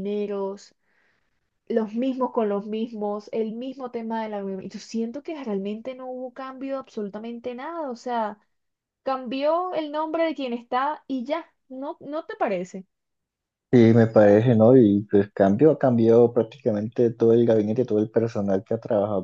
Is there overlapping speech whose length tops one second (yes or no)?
no